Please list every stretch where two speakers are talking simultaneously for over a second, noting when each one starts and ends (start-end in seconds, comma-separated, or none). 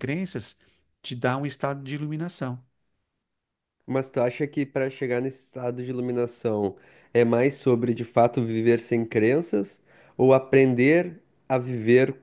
none